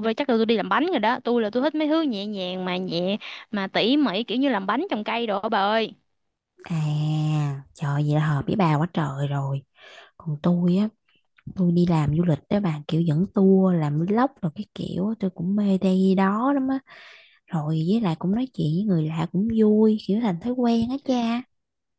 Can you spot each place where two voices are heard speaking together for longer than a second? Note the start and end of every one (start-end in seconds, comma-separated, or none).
none